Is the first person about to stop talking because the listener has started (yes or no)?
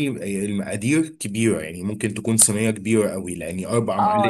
yes